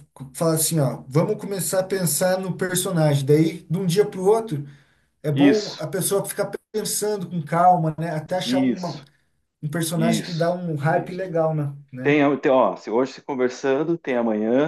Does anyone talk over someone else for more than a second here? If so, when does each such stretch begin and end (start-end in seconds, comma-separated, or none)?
9.9-11.3